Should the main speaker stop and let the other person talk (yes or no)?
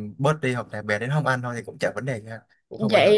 yes